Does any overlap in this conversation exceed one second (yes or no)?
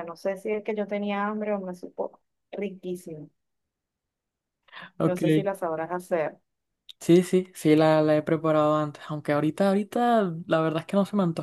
no